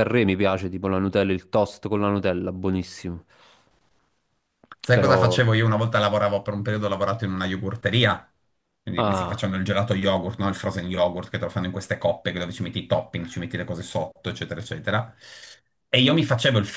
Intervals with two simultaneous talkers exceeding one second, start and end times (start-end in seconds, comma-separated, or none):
none